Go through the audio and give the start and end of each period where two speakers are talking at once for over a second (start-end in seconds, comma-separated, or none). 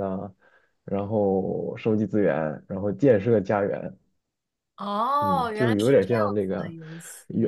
5.2-6.7